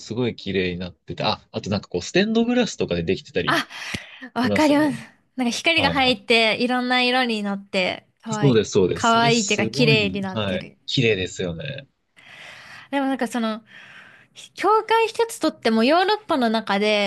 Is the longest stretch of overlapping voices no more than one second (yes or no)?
no